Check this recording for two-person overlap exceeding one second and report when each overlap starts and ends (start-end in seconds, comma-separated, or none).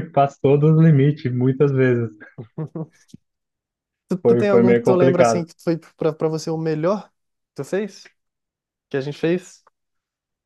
4.2-5.5